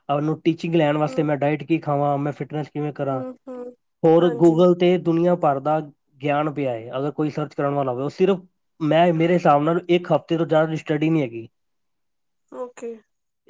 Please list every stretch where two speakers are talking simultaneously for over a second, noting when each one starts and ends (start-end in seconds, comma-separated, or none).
none